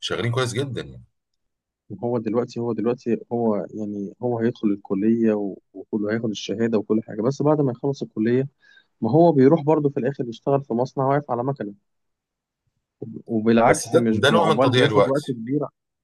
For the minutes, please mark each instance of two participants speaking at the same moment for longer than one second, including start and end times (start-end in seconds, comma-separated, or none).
13.7-15.2